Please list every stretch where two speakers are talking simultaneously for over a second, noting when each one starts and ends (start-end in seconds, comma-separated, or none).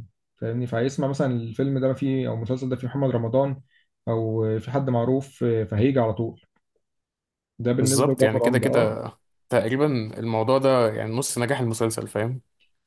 7.8-9.0